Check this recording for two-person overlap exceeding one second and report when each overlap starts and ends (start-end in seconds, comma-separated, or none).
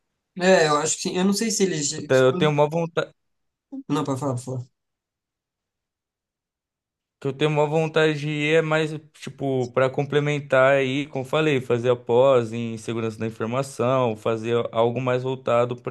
none